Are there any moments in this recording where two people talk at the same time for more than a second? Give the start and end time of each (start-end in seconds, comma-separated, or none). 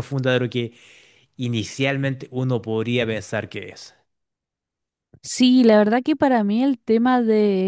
none